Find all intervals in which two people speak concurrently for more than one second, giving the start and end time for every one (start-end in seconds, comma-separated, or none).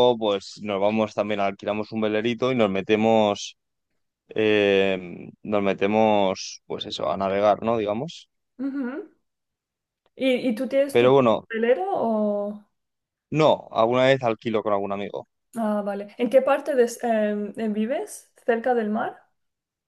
none